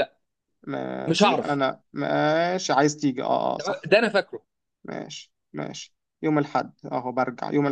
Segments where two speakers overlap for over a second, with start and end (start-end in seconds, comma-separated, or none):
none